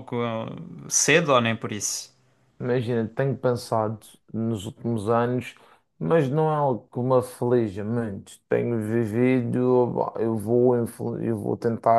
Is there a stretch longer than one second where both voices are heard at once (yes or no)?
no